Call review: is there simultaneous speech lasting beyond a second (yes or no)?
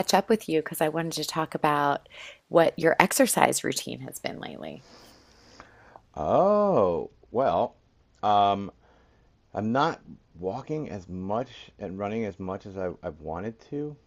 no